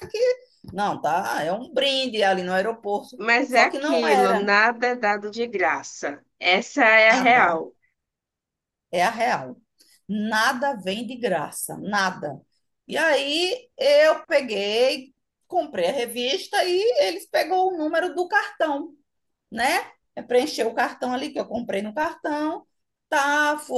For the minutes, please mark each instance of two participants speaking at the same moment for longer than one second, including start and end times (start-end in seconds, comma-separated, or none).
3.2-4.5